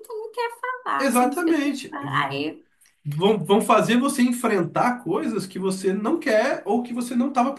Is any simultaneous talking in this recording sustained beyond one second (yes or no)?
yes